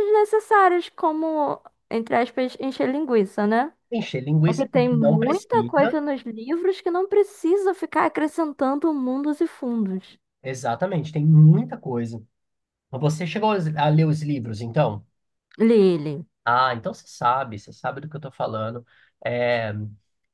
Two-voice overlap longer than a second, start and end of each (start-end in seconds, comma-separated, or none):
4.4-6.0